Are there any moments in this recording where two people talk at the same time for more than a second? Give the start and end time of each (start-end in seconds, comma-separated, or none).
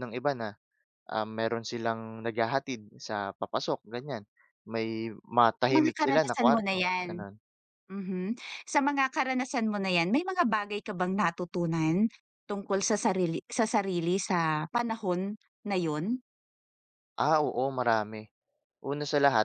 5.6-7.1